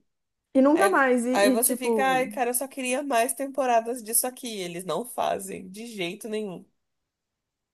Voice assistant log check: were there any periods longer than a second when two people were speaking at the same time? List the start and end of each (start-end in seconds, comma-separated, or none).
0.7-2.3